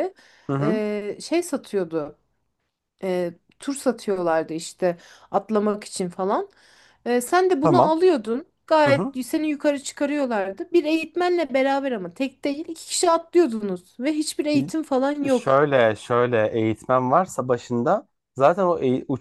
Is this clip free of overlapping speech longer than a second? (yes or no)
yes